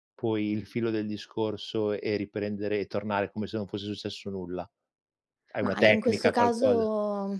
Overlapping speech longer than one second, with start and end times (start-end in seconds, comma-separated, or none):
5.6-6.9